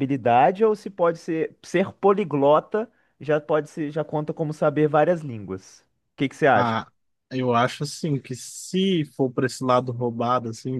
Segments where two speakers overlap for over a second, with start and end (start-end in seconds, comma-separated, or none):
none